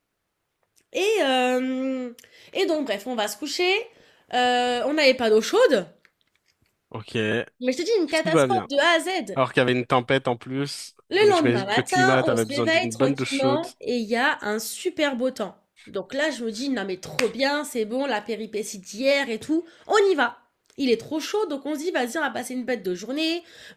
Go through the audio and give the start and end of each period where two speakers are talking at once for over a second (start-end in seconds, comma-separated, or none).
11.1-13.7